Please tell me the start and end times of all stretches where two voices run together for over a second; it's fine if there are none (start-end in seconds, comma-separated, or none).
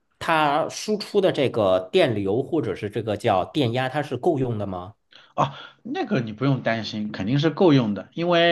none